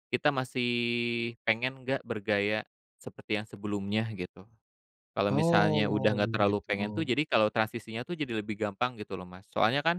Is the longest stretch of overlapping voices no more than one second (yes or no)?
no